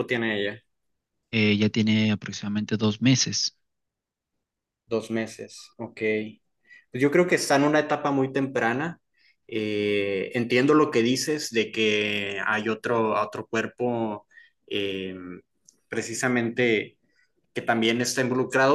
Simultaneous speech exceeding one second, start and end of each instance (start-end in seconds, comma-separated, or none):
none